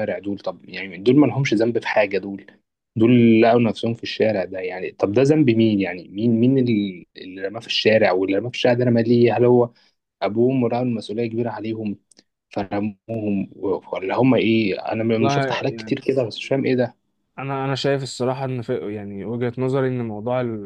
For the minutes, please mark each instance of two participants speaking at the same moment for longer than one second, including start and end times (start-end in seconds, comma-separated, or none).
none